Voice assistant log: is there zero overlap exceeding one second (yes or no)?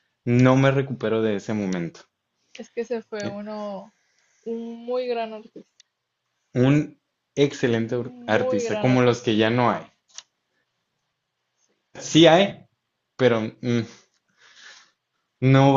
no